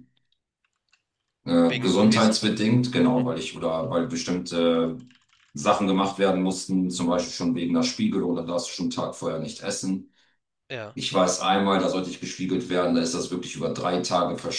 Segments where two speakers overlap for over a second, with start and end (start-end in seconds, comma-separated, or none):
1.7-3.2